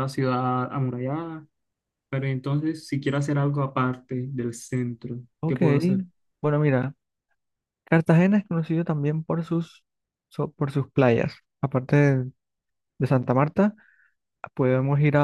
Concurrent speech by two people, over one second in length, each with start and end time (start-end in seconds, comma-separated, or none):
none